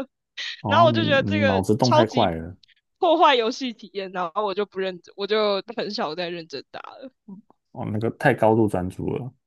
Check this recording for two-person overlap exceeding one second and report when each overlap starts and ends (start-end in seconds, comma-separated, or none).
0.7-2.3